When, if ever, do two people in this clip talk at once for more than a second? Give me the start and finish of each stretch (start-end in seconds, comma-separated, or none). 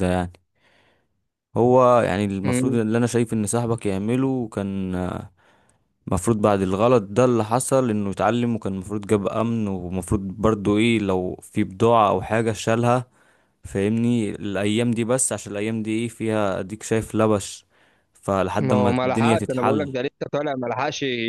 18.6-19.9